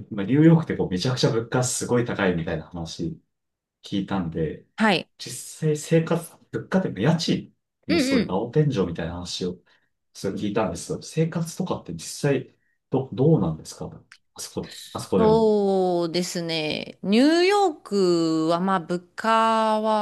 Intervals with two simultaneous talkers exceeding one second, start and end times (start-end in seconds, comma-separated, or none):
none